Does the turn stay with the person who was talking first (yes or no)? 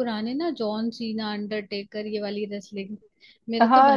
no